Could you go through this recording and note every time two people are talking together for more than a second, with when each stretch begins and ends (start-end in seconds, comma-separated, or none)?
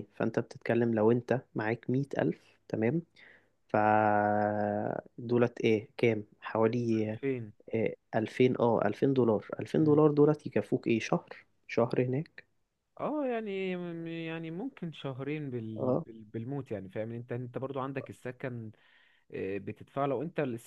none